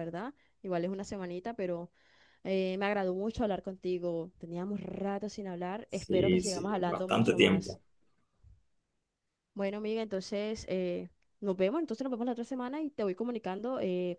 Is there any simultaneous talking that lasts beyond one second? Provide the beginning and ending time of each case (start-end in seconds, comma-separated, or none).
5.9-7.8